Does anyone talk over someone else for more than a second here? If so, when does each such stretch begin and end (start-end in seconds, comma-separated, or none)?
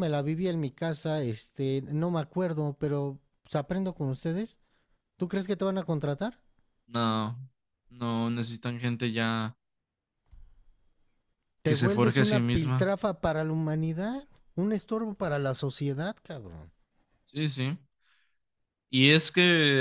11.7-12.9